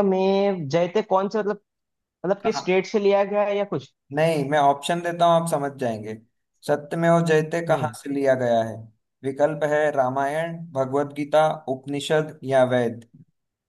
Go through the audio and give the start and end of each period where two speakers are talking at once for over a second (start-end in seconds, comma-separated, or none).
none